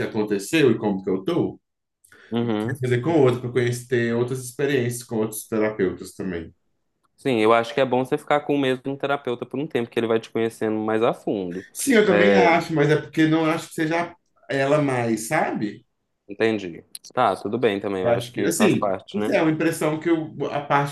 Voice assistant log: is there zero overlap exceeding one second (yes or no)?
no